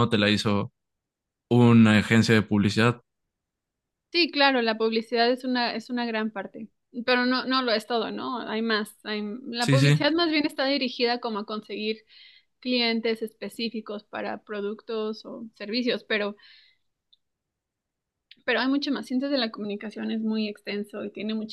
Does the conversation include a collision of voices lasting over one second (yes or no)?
no